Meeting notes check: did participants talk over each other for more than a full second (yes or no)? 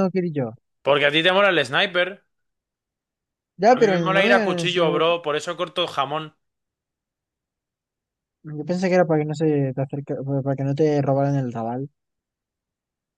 yes